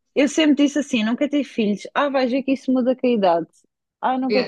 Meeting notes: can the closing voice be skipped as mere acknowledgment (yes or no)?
no